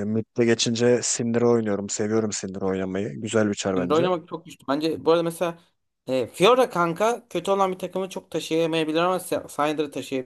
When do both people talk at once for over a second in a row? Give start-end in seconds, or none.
none